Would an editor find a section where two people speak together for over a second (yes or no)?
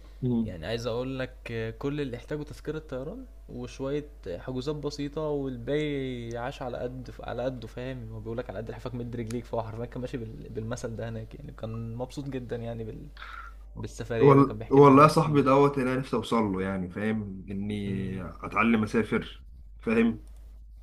yes